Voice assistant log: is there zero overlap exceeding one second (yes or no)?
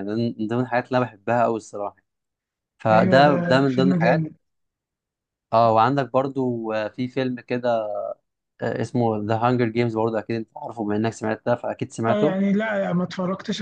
no